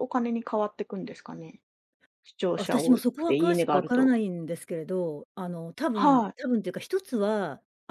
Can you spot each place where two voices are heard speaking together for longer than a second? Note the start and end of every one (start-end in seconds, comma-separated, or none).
2.5-4.2